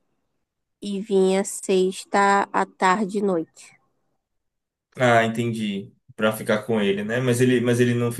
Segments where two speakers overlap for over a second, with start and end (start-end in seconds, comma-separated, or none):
none